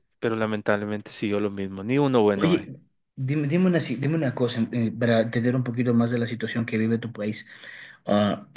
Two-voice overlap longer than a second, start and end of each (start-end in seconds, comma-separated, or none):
none